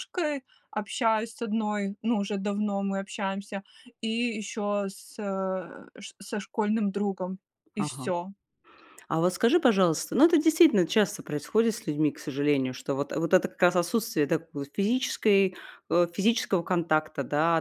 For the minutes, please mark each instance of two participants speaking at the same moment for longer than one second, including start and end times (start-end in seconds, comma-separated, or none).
none